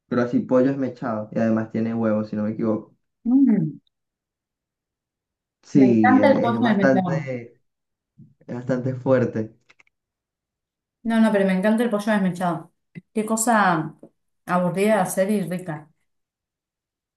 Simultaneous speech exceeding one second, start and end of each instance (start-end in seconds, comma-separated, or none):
5.7-7.3